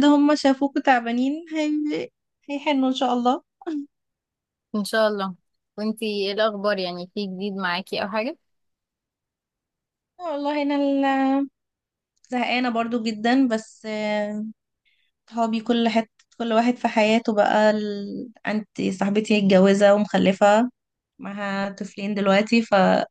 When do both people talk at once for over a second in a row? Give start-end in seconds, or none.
none